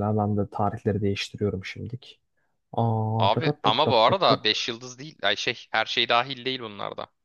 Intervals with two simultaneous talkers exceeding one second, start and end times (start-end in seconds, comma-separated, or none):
3.2-4.4